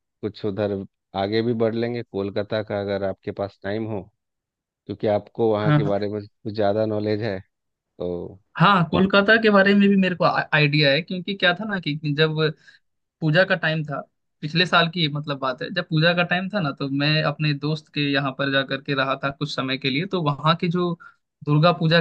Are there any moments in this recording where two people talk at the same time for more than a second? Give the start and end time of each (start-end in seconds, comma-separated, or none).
none